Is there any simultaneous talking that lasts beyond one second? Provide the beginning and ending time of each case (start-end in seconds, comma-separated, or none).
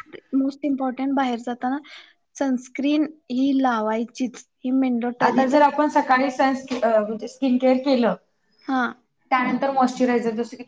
none